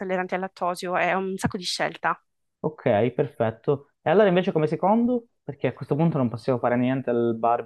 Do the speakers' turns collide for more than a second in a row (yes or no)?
no